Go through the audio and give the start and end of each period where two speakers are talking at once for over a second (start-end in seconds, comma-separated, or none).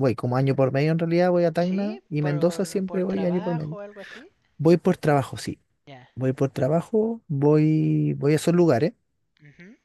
1.6-3.8